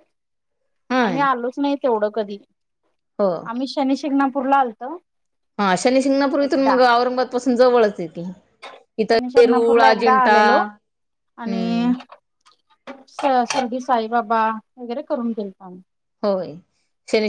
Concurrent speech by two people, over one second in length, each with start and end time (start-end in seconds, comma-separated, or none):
9.0-10.6